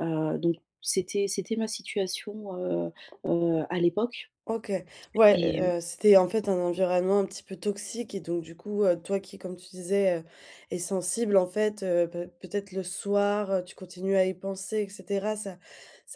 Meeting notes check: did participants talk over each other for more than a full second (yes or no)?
no